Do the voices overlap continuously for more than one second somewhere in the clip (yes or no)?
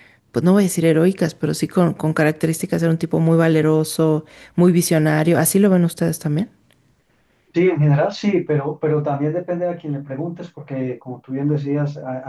no